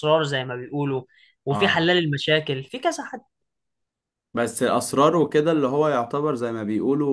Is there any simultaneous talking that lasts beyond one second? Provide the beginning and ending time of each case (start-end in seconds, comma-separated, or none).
none